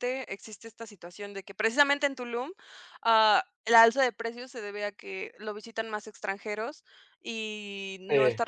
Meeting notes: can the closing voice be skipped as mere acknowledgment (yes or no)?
yes